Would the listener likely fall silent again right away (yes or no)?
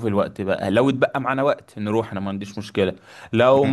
yes